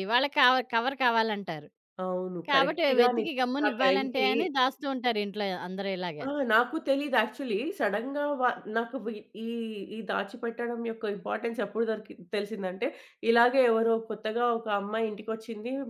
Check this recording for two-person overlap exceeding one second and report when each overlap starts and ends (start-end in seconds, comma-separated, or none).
2.5-4.3